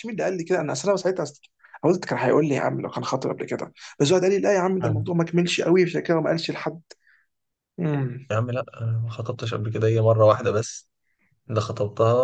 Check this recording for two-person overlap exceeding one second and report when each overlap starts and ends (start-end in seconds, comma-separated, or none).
none